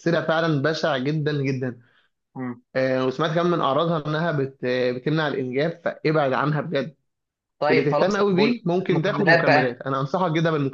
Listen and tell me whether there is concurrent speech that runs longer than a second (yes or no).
yes